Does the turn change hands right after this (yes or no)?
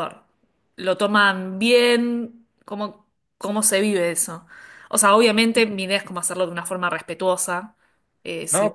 yes